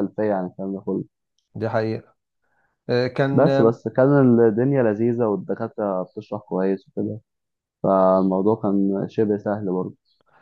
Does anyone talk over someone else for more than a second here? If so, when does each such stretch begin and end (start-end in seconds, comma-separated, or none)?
none